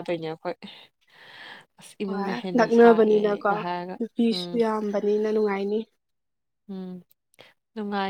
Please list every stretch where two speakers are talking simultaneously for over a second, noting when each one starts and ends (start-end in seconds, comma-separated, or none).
2.1-3.5